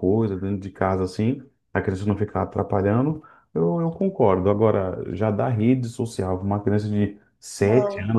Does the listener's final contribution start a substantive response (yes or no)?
no